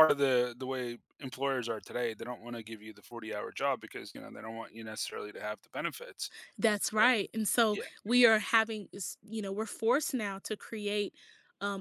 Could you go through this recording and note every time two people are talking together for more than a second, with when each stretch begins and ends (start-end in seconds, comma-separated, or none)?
none